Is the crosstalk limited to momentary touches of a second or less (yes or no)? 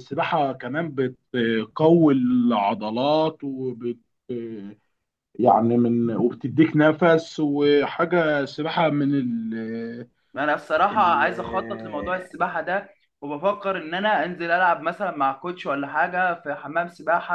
yes